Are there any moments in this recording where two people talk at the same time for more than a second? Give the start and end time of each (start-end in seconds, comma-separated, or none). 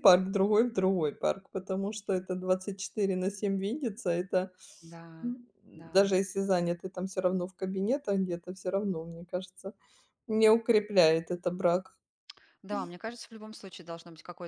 none